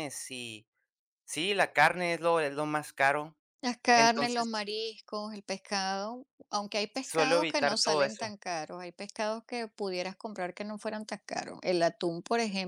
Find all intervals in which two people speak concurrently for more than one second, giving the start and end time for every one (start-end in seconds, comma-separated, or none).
7.0-8.3